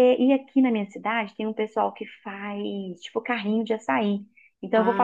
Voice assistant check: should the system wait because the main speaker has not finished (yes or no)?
yes